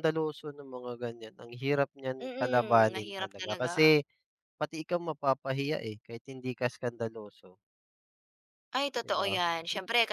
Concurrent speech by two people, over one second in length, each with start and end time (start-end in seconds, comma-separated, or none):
2.2-3.7